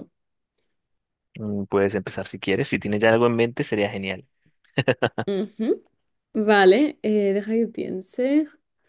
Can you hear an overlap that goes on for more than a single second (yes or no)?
no